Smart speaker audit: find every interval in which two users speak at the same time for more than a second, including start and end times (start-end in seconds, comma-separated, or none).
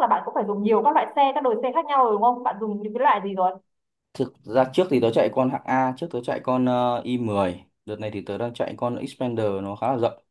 none